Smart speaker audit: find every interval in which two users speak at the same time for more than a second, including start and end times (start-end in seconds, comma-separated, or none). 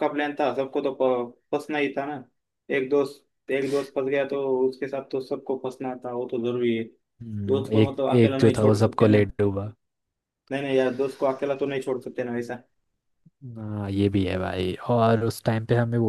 7.5-9.3